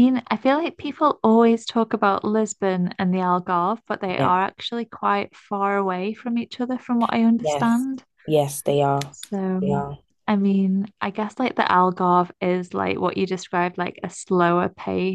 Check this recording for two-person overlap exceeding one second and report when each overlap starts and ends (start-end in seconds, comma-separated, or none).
none